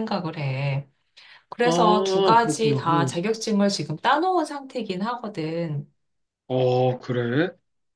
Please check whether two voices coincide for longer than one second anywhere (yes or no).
yes